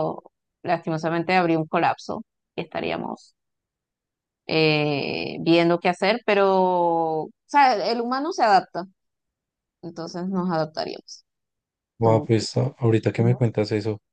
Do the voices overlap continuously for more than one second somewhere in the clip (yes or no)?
no